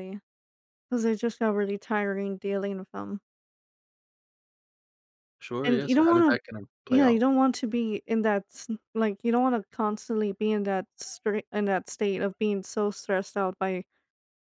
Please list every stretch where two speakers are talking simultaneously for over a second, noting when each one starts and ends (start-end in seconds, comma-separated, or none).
5.6-7.2